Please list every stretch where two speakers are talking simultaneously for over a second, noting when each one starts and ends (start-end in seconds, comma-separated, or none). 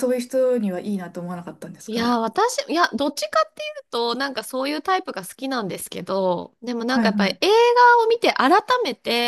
none